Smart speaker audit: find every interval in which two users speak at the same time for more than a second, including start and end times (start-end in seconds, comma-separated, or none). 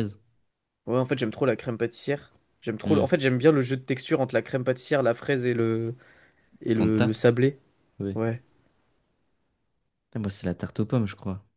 none